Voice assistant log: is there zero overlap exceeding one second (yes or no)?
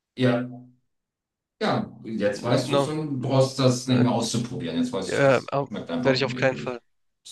no